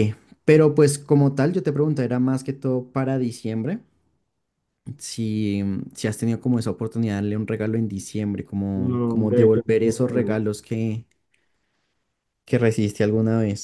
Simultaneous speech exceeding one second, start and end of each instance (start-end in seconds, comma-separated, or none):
8.7-10.4